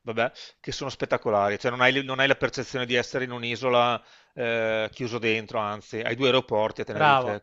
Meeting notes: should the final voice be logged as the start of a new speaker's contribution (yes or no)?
yes